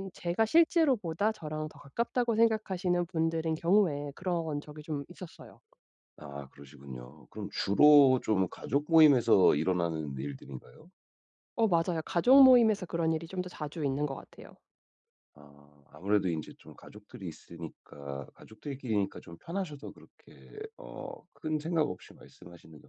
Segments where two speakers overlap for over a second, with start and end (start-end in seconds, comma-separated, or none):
none